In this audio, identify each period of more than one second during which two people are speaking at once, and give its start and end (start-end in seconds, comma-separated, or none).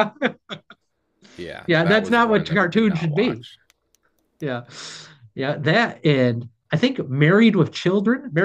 1.7-3.4